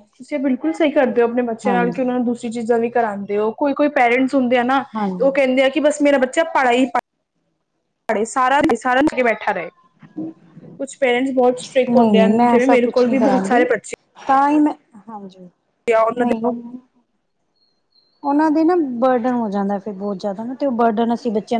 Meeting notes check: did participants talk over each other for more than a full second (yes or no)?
yes